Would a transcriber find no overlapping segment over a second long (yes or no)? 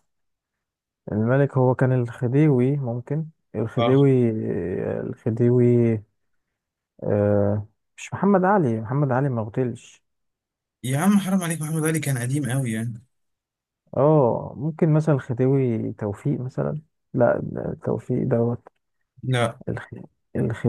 yes